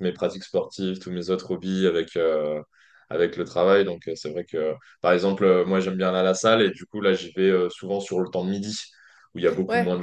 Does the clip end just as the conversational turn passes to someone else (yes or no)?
no